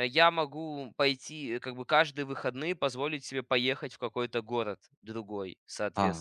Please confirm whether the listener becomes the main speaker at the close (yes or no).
yes